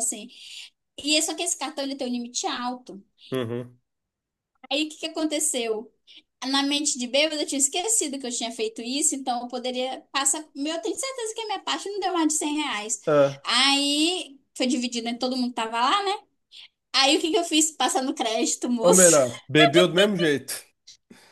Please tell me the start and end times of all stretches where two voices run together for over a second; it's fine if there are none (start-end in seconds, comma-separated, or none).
none